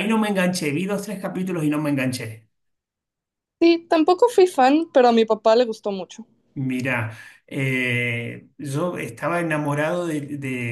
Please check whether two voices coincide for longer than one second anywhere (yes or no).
no